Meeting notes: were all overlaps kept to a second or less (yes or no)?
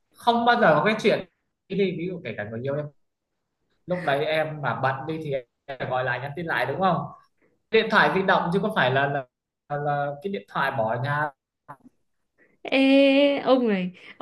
yes